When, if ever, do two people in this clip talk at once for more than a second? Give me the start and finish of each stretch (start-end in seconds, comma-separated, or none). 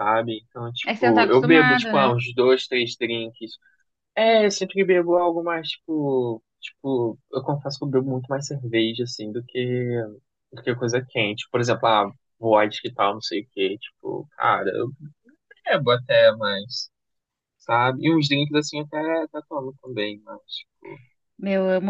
0.8-2.1